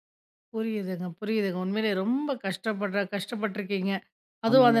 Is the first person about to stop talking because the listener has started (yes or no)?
no